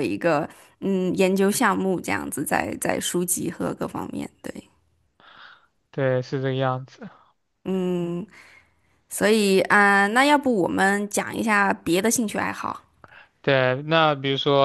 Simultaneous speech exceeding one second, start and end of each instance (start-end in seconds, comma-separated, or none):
none